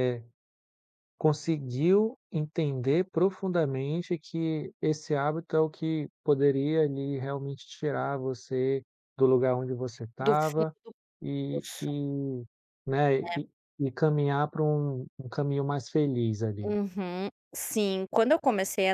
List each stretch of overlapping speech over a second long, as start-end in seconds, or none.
none